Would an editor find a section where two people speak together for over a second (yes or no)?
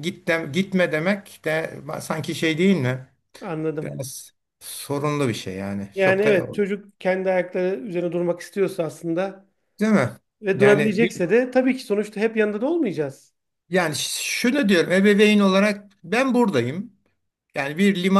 no